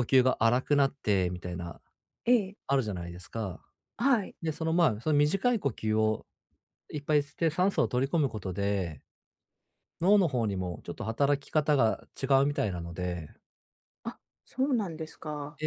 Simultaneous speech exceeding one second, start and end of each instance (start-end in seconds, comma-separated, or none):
none